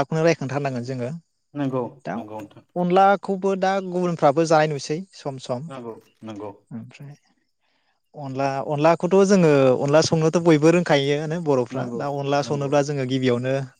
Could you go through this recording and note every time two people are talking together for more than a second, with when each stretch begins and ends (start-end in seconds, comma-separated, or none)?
none